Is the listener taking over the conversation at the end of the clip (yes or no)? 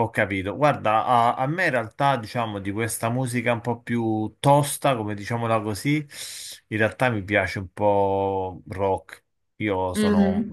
no